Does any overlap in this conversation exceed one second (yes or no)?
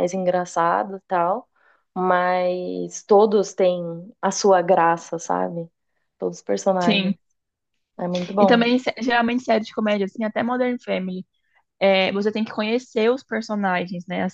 no